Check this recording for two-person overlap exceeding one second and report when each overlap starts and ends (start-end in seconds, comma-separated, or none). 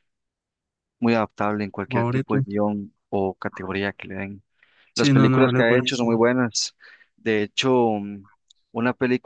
5.0-6.2